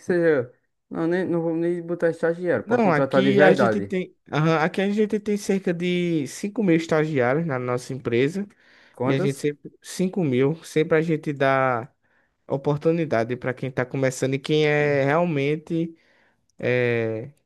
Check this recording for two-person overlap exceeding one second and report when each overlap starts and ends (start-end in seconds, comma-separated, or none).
2.6-3.9